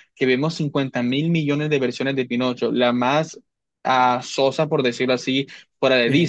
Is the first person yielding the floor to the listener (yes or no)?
no